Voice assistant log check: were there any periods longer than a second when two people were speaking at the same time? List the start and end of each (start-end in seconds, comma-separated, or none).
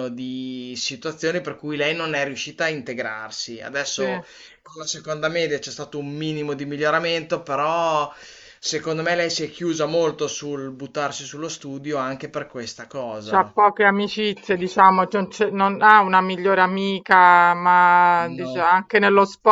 none